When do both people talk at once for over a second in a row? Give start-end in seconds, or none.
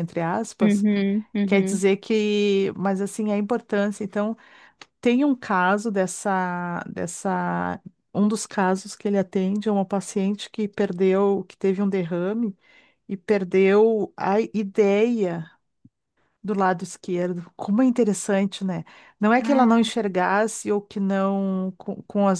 none